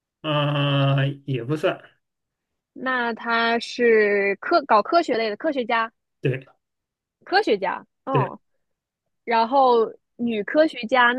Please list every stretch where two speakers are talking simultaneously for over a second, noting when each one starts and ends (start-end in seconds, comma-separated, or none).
none